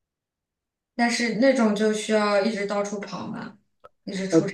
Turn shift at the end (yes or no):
yes